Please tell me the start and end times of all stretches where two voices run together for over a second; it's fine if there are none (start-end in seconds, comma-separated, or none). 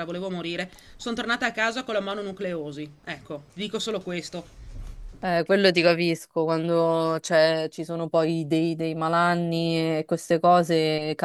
none